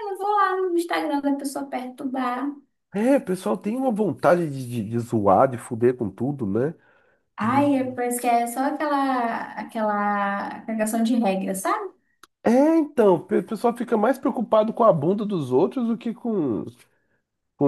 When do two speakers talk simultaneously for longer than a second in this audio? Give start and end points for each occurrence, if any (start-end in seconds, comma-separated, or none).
none